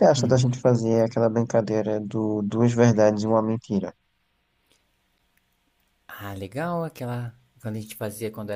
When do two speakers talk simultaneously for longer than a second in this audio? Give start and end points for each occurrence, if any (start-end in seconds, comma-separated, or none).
none